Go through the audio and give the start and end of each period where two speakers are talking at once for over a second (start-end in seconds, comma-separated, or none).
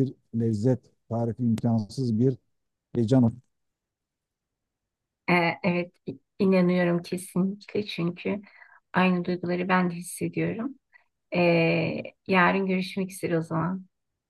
none